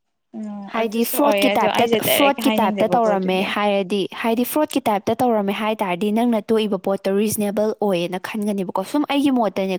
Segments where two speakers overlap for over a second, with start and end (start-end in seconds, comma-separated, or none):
0.7-3.5